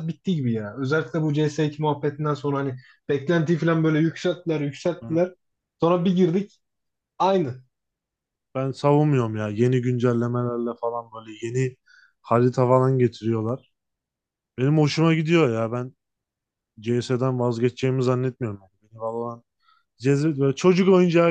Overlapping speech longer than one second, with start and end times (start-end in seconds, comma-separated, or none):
none